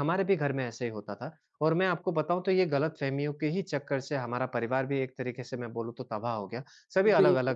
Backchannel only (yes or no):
yes